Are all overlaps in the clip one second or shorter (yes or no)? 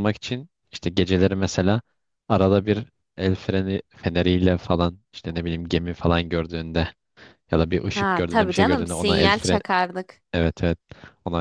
no